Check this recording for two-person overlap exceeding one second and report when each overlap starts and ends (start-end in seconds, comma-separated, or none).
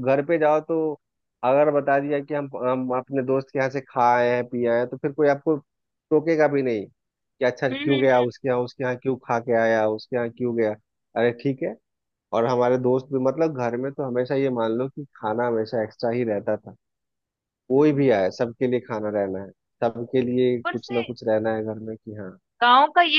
none